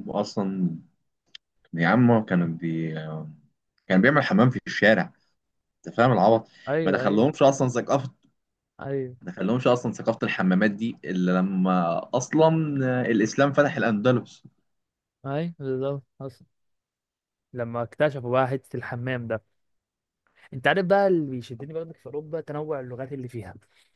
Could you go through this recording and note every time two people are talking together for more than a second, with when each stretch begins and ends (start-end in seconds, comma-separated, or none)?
none